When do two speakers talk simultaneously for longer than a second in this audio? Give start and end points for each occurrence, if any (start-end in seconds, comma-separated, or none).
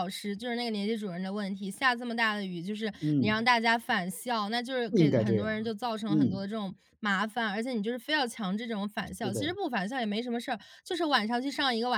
4.9-6.4